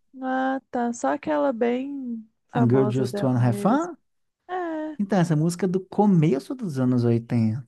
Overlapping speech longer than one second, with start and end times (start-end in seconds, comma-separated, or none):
2.5-3.9